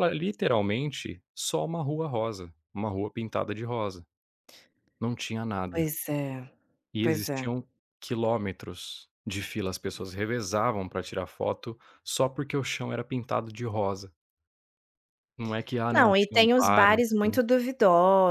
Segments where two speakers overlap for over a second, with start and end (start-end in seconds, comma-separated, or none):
15.9-17.4